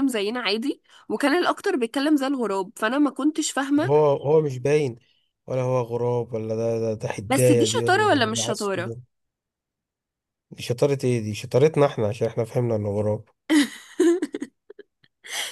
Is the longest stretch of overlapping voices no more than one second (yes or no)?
no